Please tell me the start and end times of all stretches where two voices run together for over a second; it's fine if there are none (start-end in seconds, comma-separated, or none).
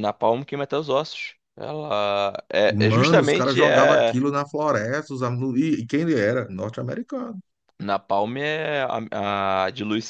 2.7-4.2